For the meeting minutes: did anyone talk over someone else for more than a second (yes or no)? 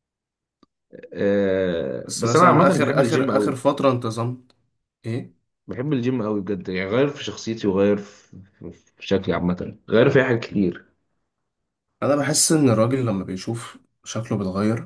yes